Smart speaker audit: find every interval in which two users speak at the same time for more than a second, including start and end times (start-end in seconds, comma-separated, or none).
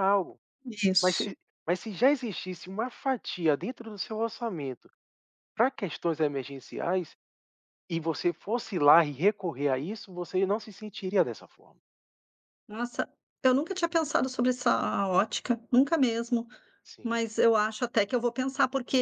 none